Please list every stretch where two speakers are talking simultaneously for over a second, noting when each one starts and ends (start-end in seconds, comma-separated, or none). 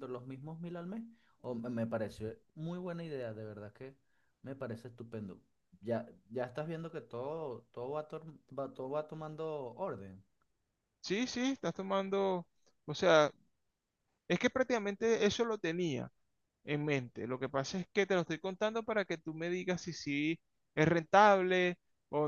none